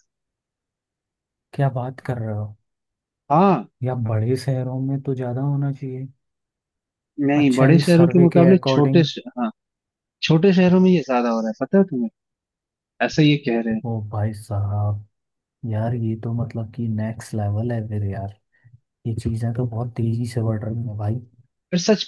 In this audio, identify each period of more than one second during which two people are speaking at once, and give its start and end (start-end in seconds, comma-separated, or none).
7.4-9.1